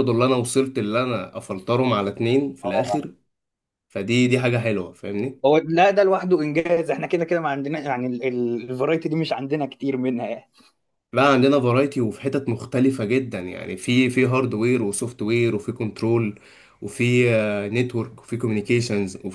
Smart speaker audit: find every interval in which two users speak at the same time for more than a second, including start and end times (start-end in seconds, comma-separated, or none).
none